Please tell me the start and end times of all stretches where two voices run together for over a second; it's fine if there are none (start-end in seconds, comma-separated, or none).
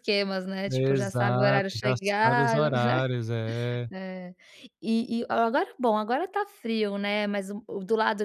0.7-3.1